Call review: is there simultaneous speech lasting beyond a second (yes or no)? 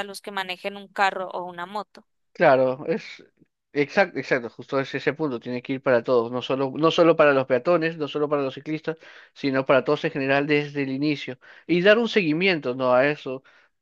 no